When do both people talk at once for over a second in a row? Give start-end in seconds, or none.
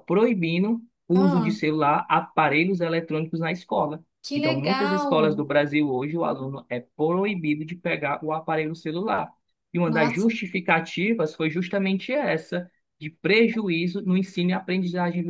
4.2-5.4